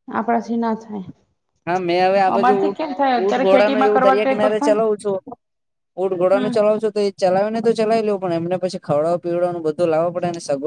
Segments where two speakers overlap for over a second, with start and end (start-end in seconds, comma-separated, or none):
3.2-4.8